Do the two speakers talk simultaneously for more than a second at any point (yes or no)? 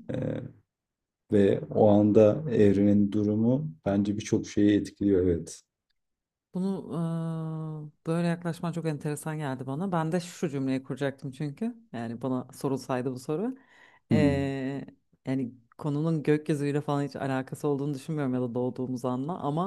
no